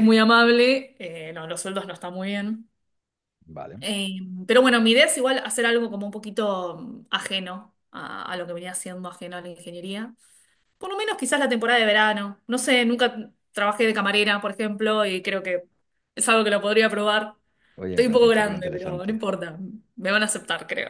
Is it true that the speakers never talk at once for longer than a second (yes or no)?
no